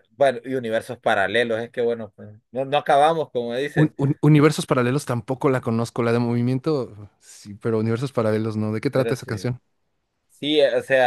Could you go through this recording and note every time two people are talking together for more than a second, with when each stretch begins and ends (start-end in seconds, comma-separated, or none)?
none